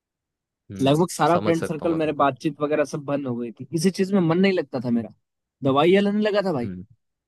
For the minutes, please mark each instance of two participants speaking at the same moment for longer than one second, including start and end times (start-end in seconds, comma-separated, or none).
0.8-2.3